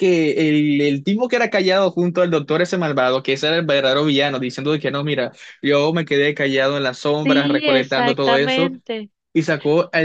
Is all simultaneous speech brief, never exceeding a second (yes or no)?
no